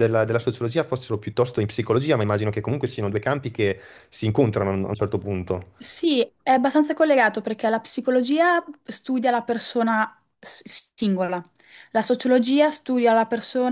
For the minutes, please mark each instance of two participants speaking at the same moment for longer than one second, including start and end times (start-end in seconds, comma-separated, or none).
none